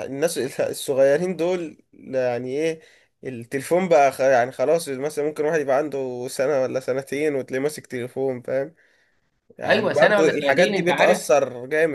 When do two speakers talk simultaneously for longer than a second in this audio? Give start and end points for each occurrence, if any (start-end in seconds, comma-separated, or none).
9.6-11.2